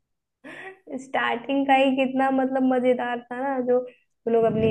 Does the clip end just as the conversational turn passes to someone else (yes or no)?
no